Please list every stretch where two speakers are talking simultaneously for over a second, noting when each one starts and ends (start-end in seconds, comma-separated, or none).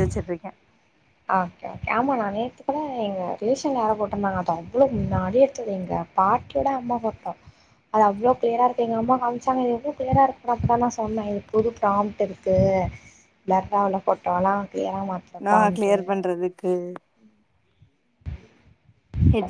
none